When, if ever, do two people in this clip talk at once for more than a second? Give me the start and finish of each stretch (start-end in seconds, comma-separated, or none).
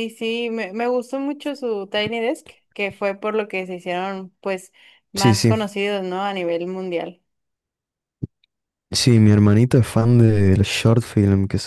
none